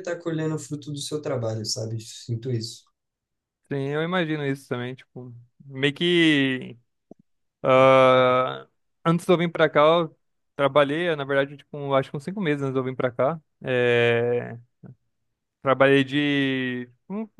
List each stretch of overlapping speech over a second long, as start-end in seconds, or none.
none